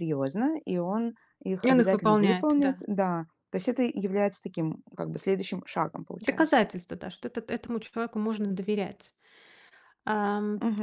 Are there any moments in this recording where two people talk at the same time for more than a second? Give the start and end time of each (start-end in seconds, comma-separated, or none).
1.6-2.8